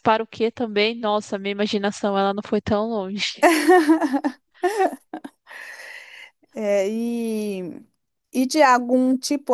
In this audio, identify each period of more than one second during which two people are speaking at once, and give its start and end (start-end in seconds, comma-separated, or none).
none